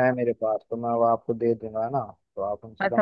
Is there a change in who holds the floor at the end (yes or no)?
yes